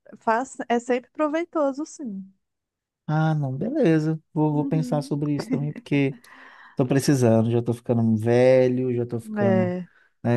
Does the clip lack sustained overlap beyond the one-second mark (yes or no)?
yes